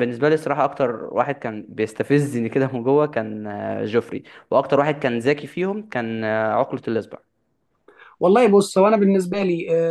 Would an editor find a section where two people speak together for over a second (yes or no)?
no